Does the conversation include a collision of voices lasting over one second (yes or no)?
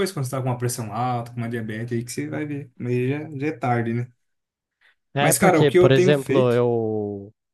yes